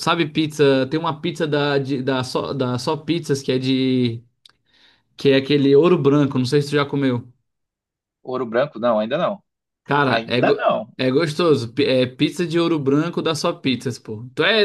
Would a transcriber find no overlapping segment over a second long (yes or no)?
yes